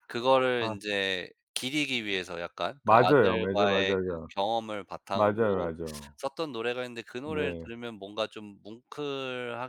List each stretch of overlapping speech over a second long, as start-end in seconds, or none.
2.8-4.3